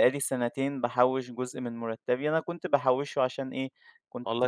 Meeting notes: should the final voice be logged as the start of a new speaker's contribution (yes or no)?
no